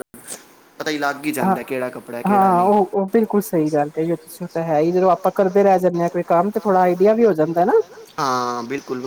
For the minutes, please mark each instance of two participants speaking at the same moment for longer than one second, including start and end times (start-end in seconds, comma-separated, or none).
1.4-2.7